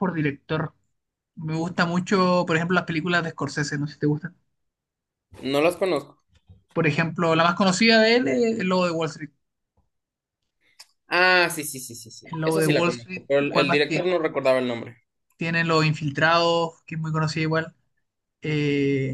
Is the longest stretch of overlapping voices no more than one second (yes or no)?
no